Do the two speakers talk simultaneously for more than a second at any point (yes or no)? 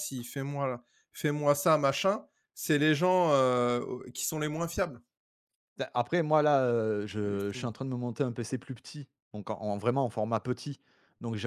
no